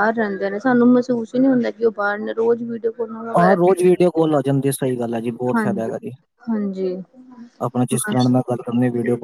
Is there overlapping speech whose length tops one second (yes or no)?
no